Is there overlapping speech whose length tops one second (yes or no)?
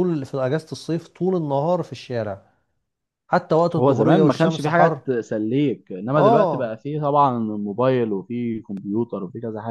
yes